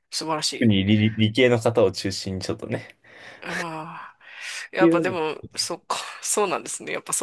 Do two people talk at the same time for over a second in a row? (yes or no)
no